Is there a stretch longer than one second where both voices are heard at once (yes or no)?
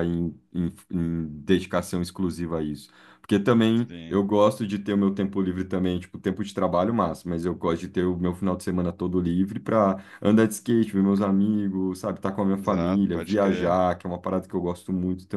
yes